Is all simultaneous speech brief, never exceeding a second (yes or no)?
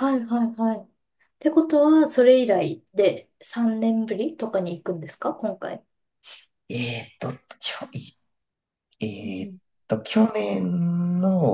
yes